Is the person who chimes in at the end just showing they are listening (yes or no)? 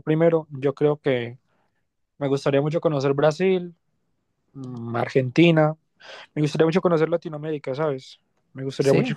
yes